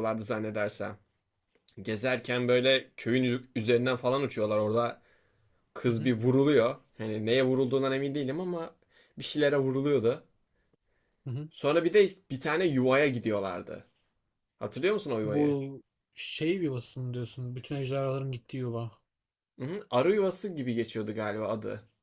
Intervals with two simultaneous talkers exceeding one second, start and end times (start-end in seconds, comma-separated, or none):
none